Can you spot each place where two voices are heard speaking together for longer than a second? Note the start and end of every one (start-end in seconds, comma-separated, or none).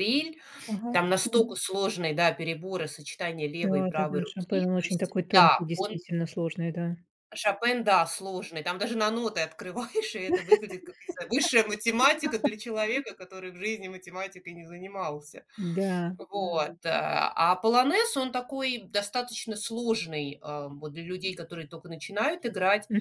3.6-6.0